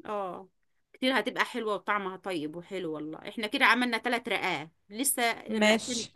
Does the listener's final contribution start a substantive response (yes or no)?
no